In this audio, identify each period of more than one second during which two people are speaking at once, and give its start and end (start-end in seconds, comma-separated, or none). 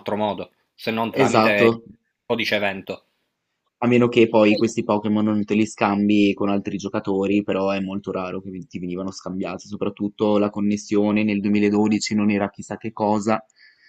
none